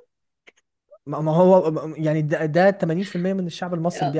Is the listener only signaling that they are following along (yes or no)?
no